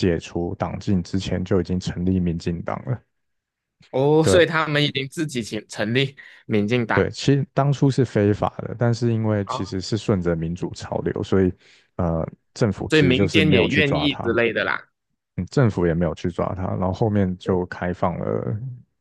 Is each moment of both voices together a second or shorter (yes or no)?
no